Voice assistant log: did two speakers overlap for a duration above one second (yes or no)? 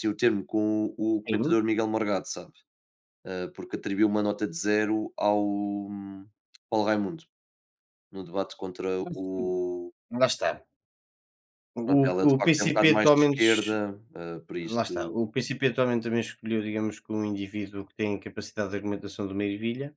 yes